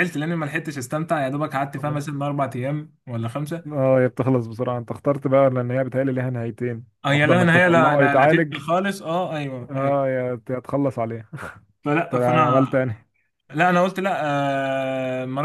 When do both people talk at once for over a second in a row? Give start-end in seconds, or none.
7.0-8.6